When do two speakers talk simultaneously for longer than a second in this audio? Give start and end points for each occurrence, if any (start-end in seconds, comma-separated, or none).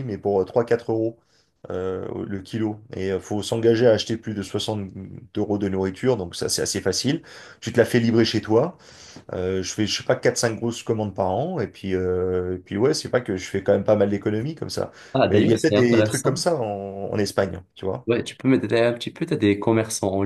15.1-16.4